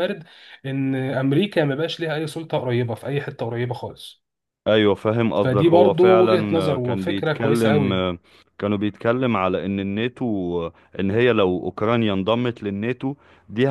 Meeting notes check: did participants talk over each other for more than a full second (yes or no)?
yes